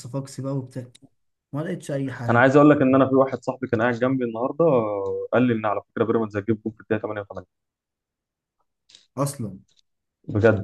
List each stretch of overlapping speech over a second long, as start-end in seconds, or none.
none